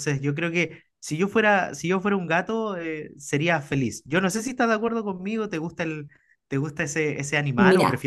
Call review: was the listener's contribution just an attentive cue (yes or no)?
no